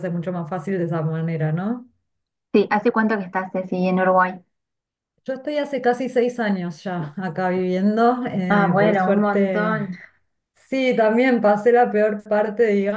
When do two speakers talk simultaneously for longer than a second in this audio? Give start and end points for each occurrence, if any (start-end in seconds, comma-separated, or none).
8.5-10.0